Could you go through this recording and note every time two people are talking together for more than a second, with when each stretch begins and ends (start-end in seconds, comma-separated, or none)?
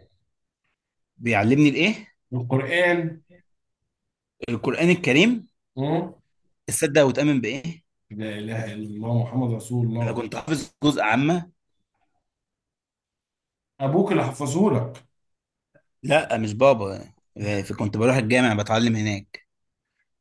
none